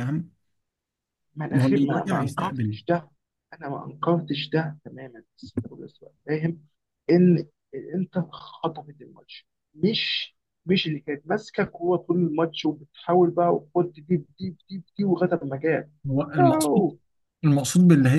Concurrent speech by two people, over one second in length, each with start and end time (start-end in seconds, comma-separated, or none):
1.5-2.8